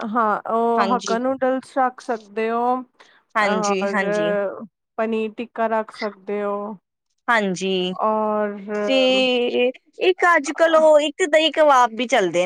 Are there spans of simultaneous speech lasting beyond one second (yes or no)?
no